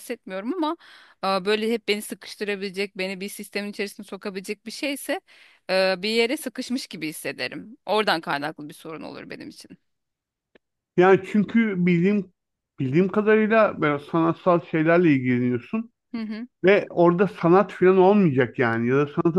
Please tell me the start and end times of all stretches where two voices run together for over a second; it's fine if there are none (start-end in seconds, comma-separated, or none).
none